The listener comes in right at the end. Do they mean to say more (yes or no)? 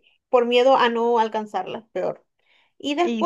no